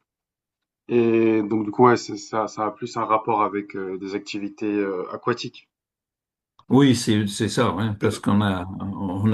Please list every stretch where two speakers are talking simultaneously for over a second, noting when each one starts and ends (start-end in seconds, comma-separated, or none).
none